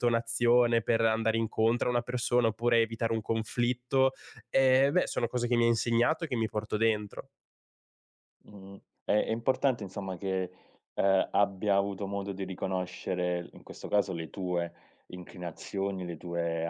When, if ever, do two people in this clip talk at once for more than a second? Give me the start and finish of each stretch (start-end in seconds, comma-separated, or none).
none